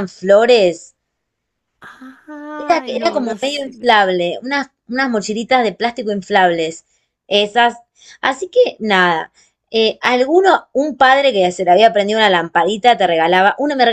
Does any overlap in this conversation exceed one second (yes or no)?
yes